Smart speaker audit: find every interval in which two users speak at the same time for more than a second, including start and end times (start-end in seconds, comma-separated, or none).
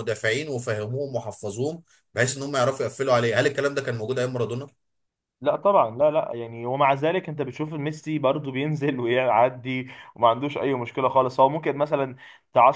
none